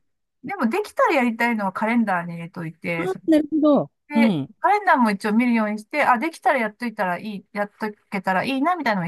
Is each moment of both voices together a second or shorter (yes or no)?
yes